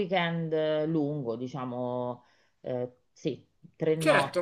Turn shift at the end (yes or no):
yes